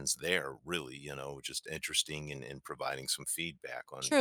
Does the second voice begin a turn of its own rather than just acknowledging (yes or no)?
yes